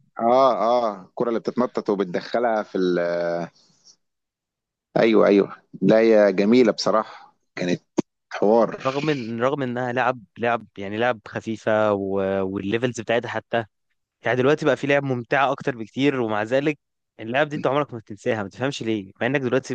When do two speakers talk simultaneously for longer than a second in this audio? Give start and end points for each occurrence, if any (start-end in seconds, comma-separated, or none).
none